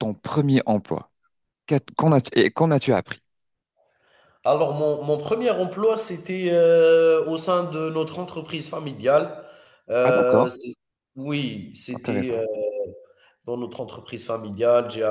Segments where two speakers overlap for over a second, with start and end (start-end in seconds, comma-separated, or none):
none